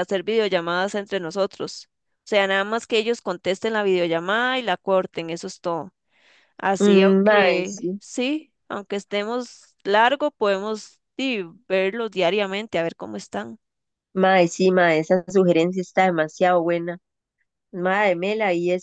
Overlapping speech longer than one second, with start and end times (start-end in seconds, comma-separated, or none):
6.8-8.0